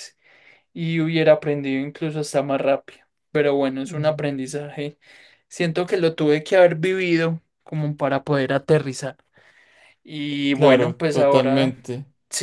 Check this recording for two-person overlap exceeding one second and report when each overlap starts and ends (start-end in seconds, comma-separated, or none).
10.5-11.7